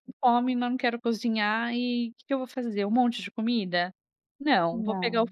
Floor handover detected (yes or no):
no